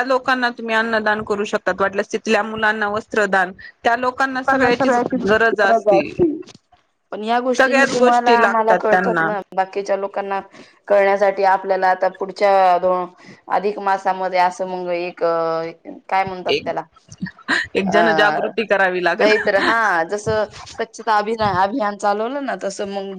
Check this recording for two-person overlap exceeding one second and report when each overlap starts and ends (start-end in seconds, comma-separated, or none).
7.6-9.3